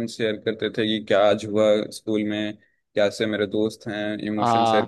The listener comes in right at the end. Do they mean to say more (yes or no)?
no